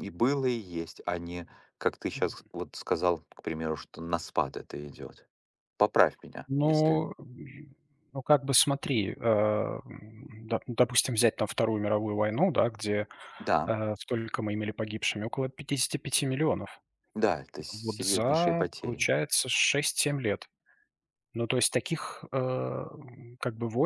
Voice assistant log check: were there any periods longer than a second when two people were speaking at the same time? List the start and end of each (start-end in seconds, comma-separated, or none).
17.7-19.1